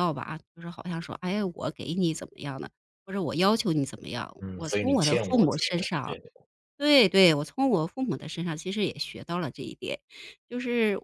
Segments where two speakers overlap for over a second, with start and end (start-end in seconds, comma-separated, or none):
4.4-6.2